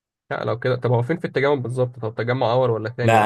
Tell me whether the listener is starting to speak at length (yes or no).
yes